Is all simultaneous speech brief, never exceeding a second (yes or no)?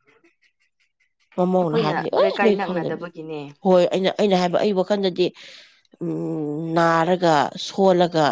no